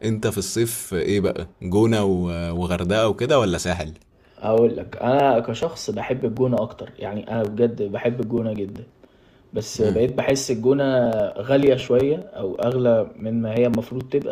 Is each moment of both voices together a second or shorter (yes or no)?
yes